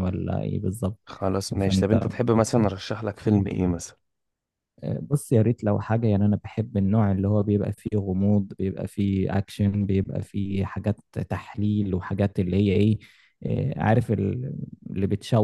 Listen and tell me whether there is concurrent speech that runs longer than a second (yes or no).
no